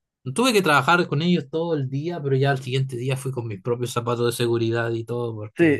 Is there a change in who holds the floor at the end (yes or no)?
yes